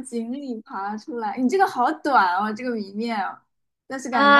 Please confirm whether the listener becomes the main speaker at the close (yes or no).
yes